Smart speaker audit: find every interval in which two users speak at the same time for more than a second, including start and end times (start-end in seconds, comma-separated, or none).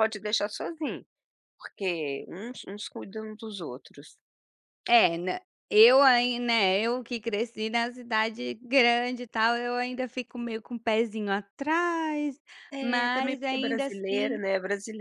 12.8-14.4